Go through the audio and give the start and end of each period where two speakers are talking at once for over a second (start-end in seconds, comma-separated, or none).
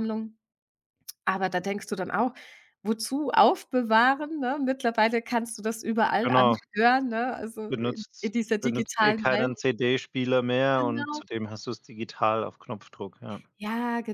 7.7-9.6